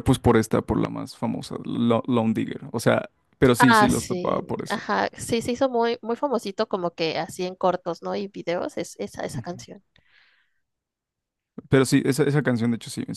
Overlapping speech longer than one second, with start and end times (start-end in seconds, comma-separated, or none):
3.6-4.8